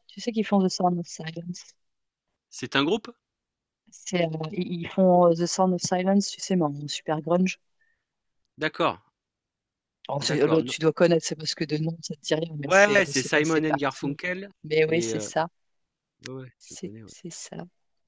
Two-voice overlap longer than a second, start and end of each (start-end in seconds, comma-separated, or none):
12.6-14.2